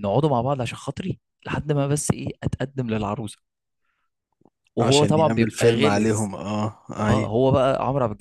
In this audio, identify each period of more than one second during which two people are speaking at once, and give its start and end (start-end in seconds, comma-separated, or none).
4.8-6.3